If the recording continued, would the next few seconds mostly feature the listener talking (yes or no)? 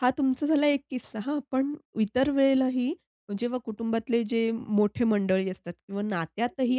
no